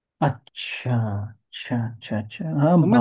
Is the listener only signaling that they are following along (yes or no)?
no